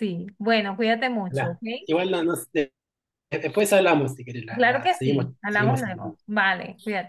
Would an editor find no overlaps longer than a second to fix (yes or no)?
no